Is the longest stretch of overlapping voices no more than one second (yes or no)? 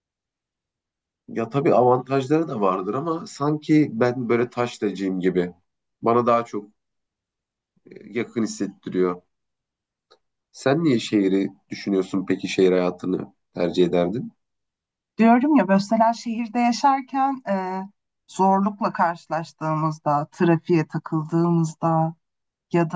yes